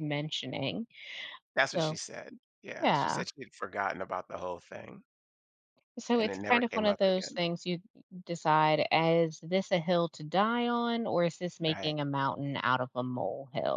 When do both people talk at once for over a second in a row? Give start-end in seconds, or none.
6.1-7.4